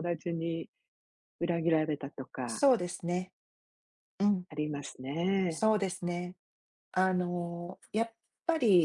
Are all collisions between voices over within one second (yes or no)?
yes